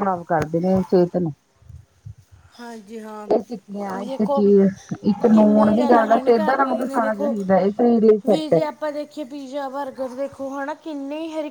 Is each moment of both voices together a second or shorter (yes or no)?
no